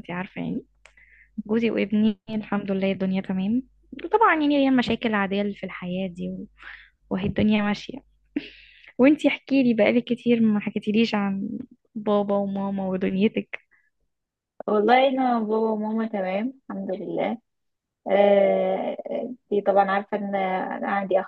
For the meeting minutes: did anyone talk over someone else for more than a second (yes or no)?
no